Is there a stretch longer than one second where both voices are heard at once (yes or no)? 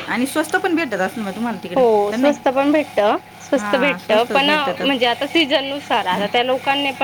yes